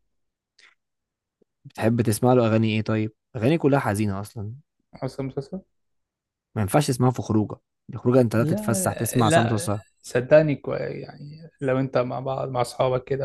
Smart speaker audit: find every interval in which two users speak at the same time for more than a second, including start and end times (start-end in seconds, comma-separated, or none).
8.4-9.8